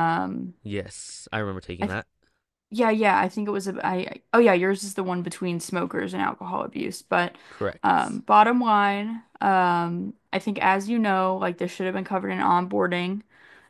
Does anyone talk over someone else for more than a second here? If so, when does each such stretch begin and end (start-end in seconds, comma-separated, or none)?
none